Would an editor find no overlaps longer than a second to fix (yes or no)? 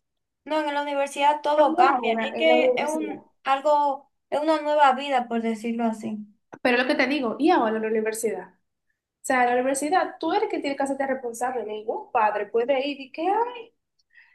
no